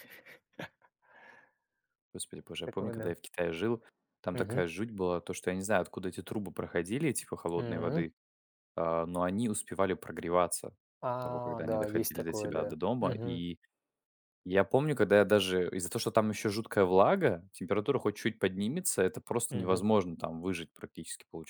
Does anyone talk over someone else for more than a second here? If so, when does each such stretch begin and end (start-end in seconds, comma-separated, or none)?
11.1-13.4